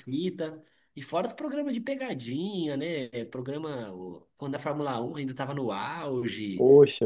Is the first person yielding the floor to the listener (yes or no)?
no